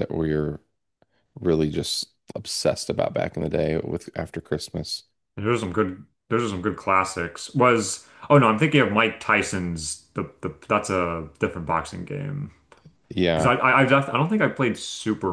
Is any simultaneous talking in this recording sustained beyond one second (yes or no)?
no